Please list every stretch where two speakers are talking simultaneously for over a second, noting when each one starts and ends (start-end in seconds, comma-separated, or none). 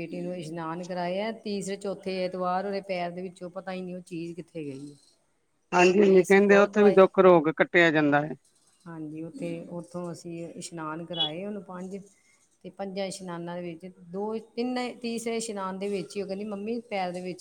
5.8-7.0